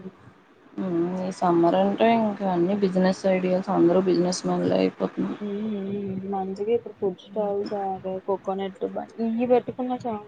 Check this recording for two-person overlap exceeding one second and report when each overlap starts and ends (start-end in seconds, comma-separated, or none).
none